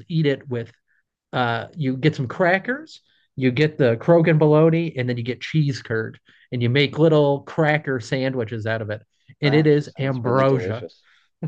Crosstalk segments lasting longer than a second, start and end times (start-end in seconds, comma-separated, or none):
9.4-10.8